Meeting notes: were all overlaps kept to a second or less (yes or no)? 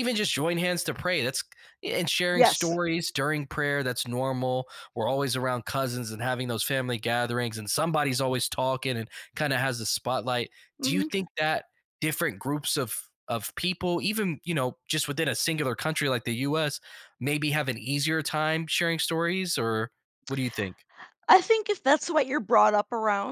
yes